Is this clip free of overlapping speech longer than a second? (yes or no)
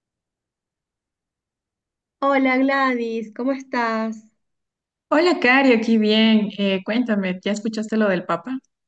yes